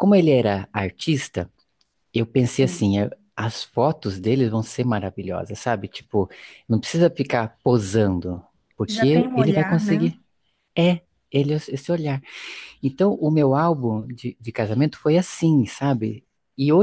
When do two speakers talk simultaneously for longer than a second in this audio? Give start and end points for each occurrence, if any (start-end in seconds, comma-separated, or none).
8.9-10.1